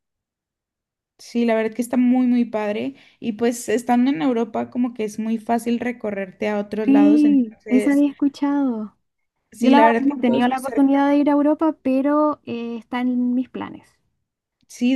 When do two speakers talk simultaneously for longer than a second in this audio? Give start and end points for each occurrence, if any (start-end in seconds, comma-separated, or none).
6.8-8.1, 9.6-11.0